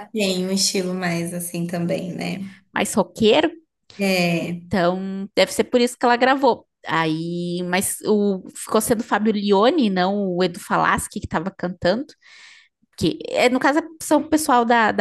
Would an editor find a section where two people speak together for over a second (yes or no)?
no